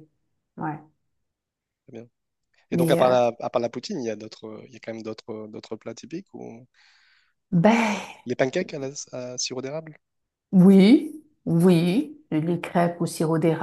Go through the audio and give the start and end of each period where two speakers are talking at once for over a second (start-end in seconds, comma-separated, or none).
none